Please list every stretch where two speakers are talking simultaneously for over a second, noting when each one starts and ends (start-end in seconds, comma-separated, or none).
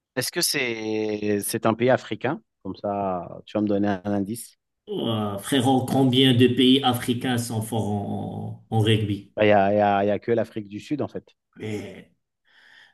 none